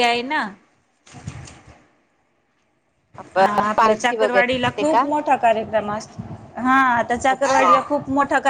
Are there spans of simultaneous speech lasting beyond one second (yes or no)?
yes